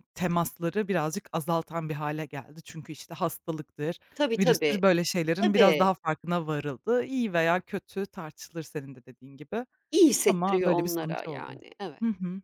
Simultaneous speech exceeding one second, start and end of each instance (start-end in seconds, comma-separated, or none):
10.2-11.6